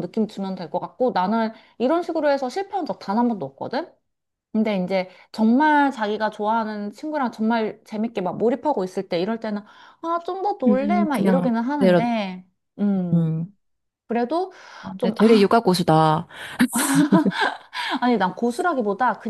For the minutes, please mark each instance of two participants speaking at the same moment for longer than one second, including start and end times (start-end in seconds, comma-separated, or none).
10.7-12.1